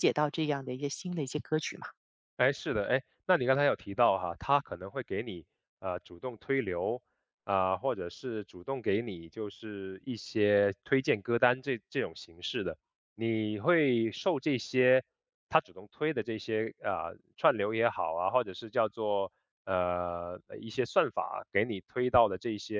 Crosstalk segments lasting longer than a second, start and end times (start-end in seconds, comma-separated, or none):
none